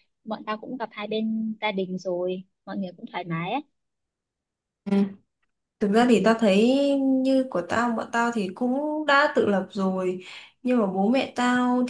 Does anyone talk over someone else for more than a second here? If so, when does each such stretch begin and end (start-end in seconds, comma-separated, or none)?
none